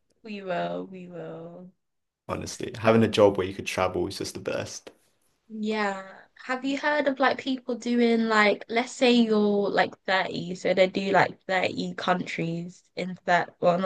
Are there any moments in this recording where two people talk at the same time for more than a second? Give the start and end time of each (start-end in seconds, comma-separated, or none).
none